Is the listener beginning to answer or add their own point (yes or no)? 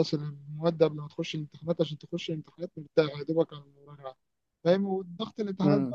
no